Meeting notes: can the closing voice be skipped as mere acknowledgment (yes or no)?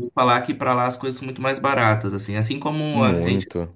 yes